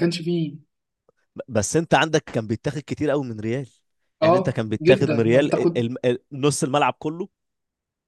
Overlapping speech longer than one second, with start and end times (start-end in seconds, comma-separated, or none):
4.2-5.8